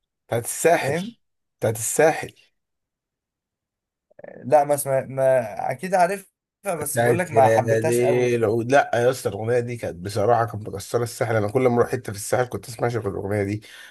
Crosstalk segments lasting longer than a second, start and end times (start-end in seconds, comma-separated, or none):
6.8-8.4